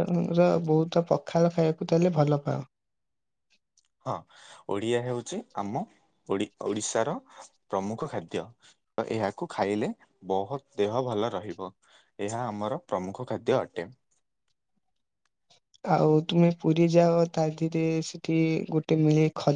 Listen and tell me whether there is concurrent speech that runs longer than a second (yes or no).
no